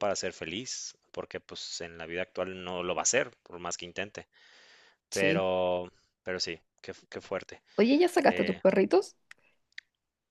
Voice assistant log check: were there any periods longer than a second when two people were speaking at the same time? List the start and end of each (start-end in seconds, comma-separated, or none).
none